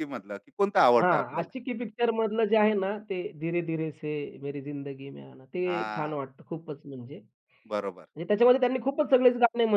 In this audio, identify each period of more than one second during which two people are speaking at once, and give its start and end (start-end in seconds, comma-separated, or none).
none